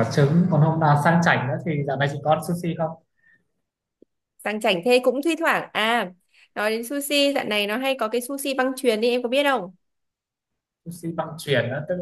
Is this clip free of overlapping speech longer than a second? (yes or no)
yes